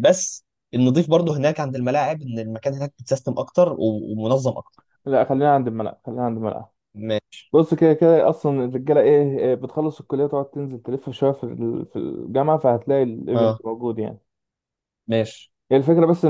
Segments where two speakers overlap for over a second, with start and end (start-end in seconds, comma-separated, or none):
none